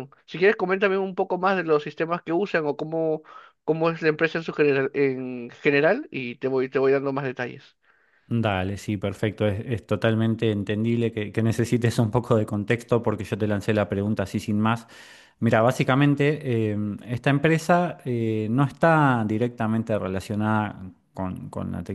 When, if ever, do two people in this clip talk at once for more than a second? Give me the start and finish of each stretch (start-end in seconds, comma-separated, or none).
none